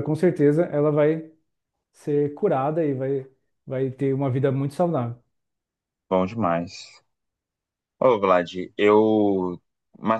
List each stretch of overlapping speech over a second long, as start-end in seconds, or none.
none